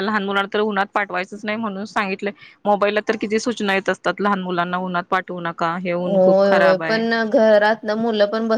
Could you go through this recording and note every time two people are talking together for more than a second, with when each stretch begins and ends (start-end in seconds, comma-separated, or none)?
none